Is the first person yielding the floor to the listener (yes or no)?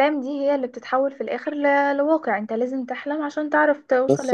yes